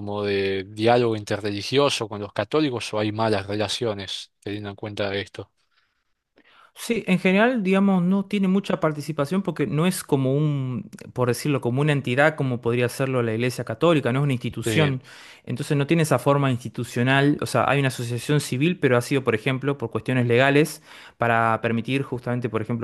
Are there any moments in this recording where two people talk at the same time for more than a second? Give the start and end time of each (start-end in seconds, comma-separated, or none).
none